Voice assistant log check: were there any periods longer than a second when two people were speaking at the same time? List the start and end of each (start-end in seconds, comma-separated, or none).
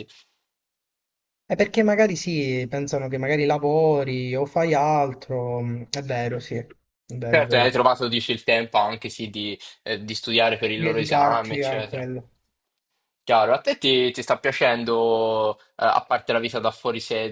10.8-12.1